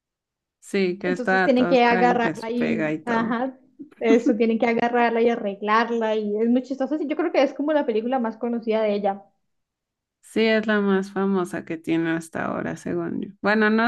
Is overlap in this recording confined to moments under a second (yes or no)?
no